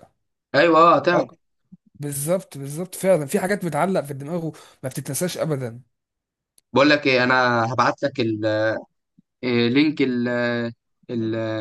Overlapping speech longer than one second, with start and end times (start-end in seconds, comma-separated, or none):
none